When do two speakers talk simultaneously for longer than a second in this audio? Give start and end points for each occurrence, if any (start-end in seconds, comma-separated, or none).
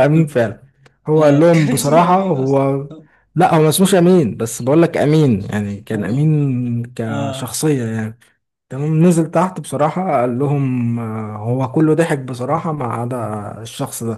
1.2-2.6